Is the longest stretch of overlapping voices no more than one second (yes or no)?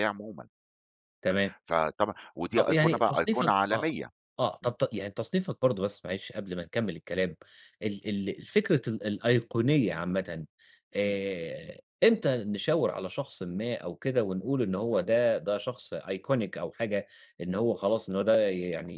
no